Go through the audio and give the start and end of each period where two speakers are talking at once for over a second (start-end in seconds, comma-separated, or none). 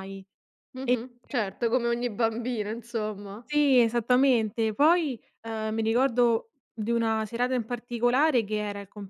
none